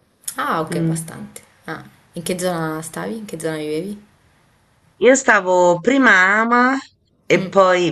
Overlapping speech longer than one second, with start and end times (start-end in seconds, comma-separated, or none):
none